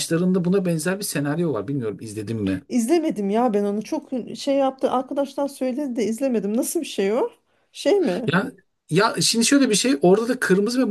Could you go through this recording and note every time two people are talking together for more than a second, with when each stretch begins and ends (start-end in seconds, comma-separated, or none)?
none